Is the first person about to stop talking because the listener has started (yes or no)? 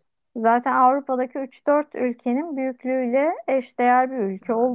no